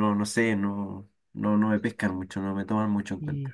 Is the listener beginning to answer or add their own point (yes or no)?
yes